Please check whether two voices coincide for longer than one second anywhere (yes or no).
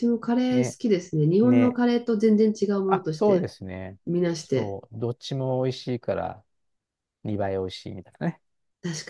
no